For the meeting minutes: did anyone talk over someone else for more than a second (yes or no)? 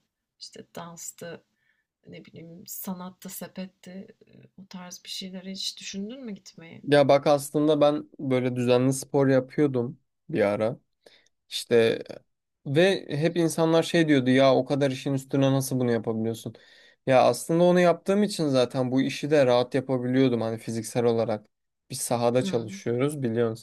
no